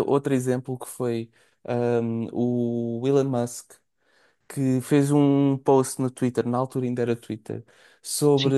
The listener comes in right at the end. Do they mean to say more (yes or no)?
no